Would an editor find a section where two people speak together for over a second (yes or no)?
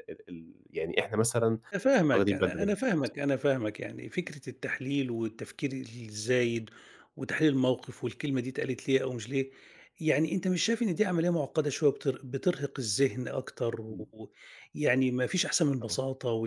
yes